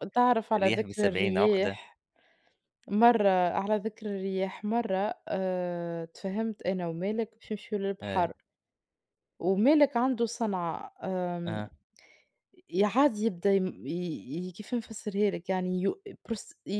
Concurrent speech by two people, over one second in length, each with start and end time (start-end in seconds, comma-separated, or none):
0.6-1.8